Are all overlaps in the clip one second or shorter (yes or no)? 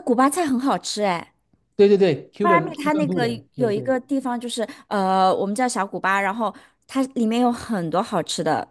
no